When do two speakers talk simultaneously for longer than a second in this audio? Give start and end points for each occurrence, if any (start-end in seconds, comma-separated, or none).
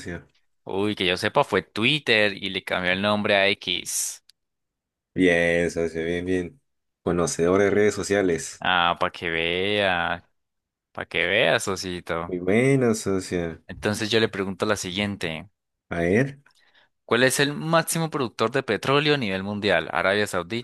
none